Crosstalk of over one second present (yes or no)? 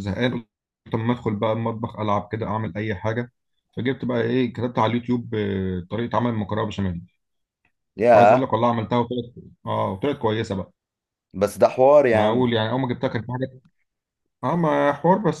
no